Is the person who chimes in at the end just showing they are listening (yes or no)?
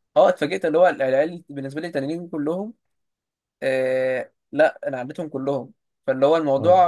yes